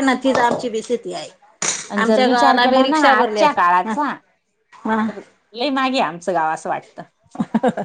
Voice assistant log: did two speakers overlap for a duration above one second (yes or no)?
yes